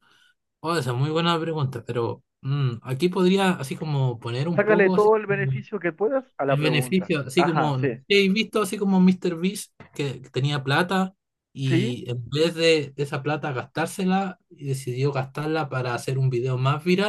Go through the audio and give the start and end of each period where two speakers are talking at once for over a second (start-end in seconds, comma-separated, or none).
6.5-8.0